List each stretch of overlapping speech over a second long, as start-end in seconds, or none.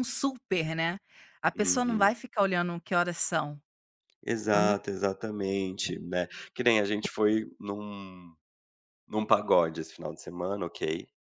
none